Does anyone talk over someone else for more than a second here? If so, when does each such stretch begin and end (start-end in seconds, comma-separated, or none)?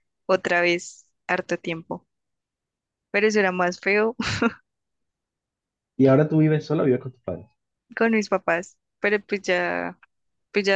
none